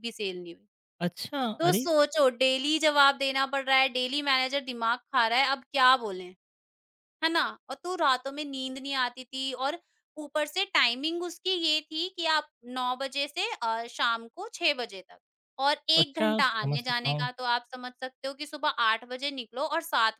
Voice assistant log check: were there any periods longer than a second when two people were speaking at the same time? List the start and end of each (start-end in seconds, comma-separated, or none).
16.0-17.3